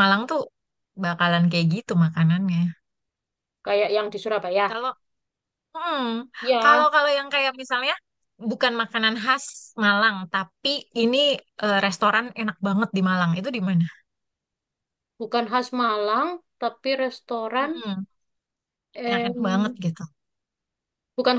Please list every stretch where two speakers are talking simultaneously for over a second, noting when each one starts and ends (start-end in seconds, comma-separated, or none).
none